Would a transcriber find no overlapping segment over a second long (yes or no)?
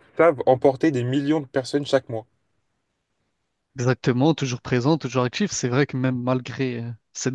yes